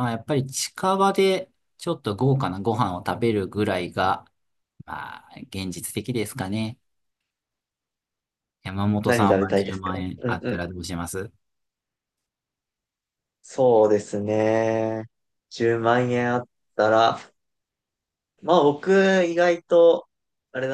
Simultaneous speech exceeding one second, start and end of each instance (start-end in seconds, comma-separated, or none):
9.1-10.6